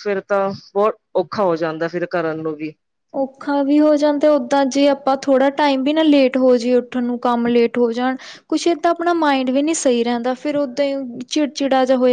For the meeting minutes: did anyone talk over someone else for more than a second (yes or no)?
no